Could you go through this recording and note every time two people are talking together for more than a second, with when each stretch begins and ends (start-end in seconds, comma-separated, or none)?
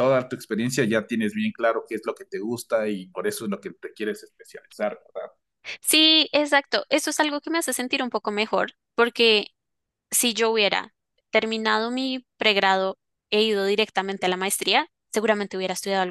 none